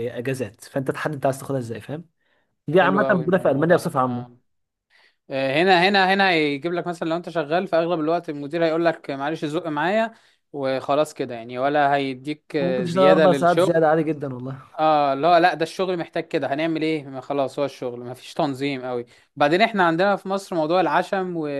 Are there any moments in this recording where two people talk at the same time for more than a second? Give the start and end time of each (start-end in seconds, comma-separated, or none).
2.7-4.4, 12.6-13.8